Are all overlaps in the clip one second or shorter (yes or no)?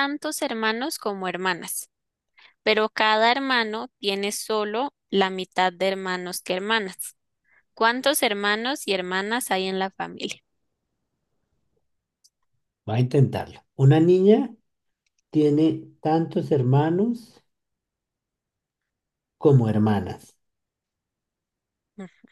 yes